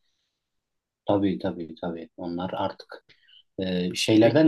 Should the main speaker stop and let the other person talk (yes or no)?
no